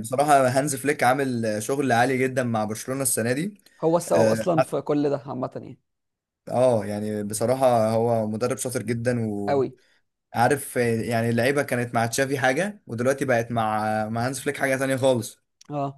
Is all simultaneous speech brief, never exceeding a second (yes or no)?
yes